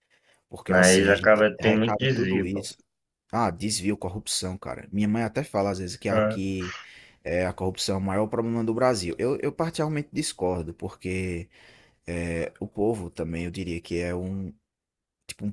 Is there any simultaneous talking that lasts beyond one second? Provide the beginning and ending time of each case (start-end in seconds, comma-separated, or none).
0.7-2.7